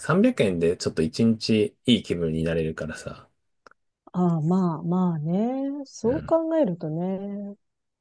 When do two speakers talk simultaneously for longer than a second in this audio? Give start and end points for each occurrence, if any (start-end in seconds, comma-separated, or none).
none